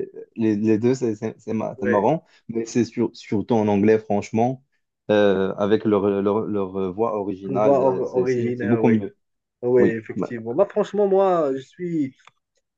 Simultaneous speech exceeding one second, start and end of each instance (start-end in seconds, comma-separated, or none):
7.5-8.9